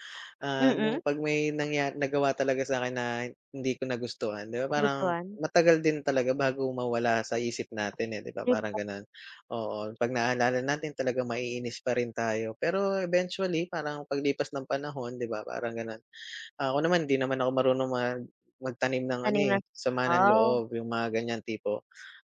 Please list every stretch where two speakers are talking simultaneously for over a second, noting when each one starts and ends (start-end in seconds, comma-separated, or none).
19.2-20.4